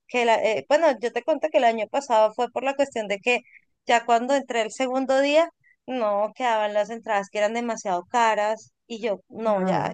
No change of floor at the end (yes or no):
yes